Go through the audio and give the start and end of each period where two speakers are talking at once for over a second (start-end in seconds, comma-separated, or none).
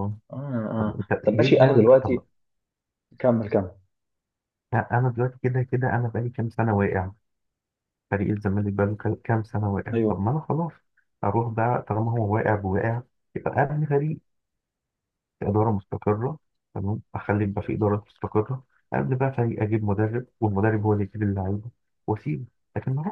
0.8-2.2